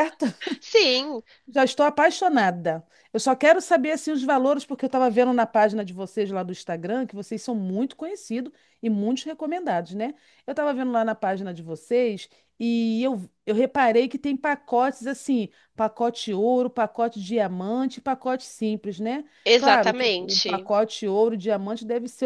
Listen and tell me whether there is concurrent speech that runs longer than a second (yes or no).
yes